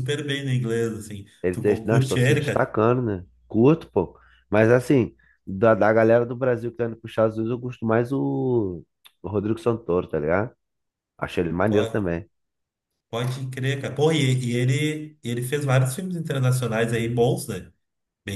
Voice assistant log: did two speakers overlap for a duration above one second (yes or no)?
yes